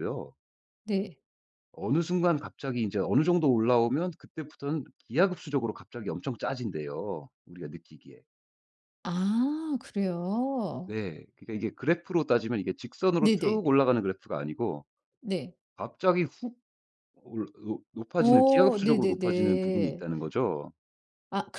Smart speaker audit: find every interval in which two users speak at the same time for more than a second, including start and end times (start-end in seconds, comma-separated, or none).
18.2-20.0